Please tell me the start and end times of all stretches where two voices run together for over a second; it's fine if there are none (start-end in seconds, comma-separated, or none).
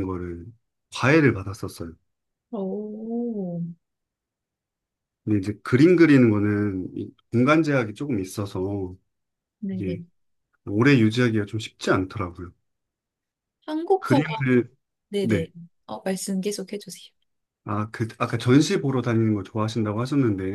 none